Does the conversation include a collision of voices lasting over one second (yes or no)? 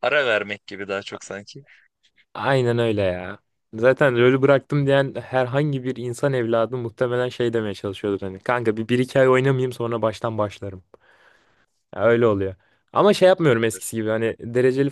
no